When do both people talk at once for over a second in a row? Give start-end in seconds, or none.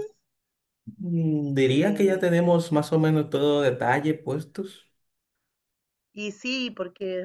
none